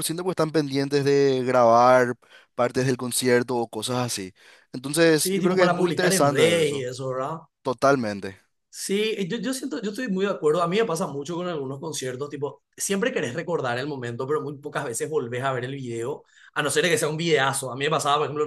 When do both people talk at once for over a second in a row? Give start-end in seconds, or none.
5.1-6.9